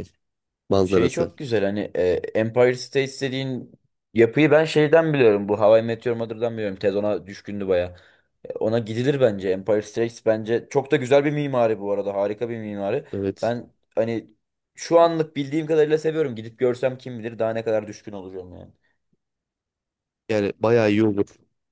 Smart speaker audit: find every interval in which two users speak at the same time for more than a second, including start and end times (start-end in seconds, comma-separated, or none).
none